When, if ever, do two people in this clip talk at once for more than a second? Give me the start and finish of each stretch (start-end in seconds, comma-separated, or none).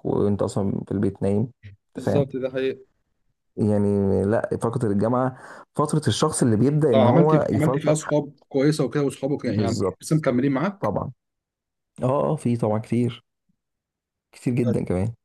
6.9-8.2